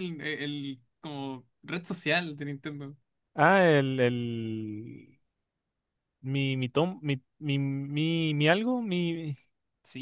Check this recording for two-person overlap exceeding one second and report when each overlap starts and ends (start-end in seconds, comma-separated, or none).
none